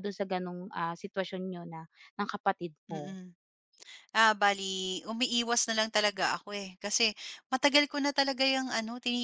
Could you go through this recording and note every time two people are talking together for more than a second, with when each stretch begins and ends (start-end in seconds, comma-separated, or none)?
none